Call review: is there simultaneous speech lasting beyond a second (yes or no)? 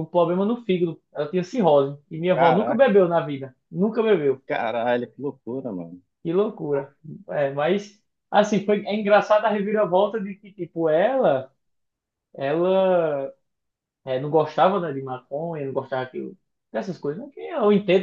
no